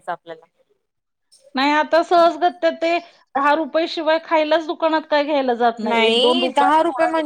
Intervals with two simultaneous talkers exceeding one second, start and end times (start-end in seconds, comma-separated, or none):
none